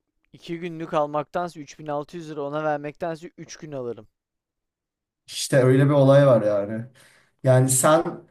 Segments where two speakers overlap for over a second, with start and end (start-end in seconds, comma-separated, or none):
none